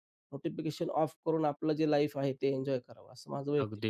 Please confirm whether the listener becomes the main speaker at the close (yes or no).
yes